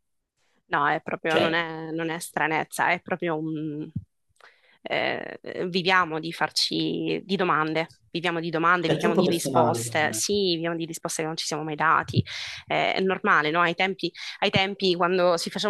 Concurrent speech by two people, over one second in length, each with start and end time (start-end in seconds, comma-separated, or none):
8.8-10.2